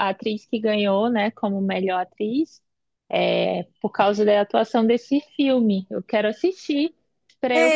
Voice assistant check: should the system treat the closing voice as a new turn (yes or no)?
yes